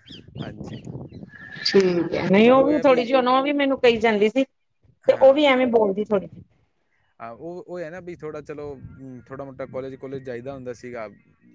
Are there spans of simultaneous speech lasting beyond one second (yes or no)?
no